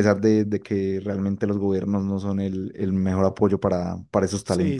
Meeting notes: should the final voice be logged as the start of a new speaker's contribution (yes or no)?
yes